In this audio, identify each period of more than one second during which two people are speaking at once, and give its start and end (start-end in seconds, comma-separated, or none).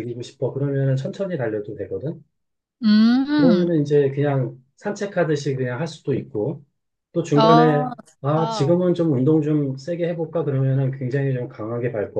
7.3-8.8